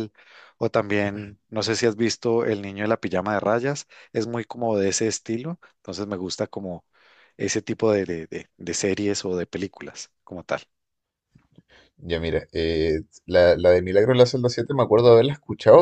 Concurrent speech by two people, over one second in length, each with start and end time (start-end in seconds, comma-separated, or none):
none